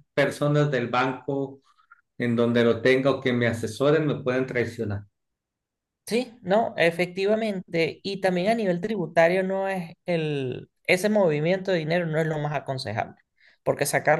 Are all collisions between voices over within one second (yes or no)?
yes